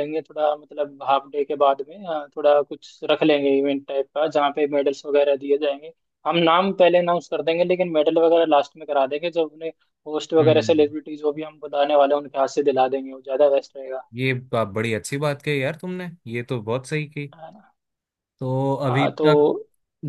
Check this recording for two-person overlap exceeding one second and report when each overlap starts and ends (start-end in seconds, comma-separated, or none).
none